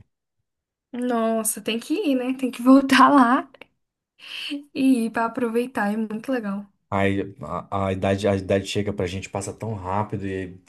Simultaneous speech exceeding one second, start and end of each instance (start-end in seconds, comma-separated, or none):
none